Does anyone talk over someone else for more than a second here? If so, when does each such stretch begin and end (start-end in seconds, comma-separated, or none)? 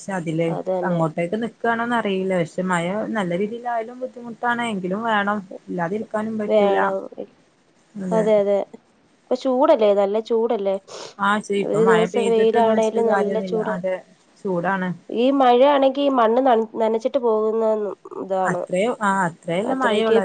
11.7-13.8